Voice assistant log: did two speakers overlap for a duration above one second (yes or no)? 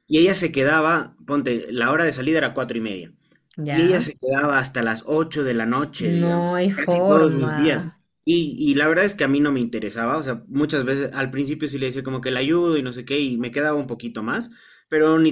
yes